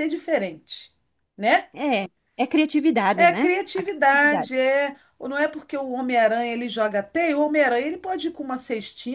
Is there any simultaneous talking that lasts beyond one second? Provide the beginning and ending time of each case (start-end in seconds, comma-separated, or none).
3.1-4.5